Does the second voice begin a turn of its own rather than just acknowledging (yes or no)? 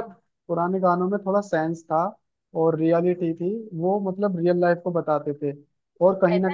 yes